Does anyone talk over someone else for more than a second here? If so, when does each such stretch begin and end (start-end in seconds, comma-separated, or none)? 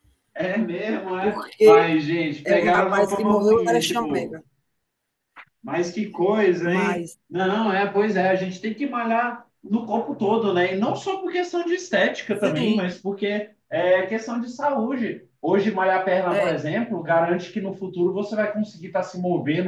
2.5-4.4